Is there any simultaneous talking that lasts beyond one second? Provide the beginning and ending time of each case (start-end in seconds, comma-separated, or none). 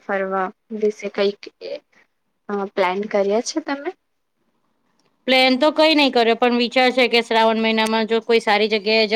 none